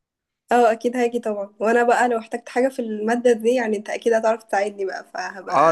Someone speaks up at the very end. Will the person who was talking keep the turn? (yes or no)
no